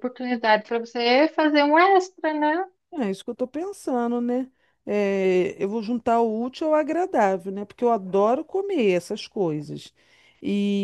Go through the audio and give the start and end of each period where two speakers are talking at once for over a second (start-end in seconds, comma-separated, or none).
none